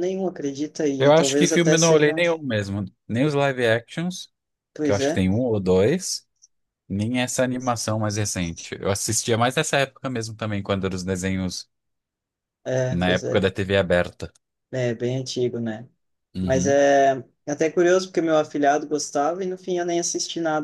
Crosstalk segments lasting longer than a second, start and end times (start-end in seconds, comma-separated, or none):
1.0-2.2